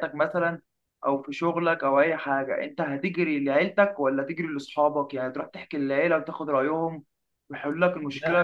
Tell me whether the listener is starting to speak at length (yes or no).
no